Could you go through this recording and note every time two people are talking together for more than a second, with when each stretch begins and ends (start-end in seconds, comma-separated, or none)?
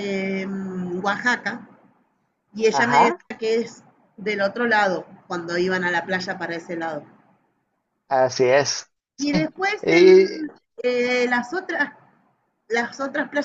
none